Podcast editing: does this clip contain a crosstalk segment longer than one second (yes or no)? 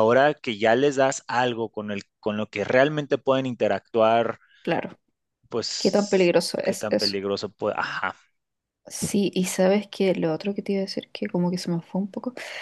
yes